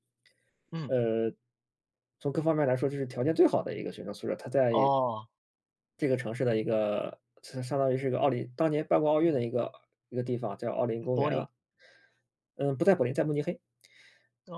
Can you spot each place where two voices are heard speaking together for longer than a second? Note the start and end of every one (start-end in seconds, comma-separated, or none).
none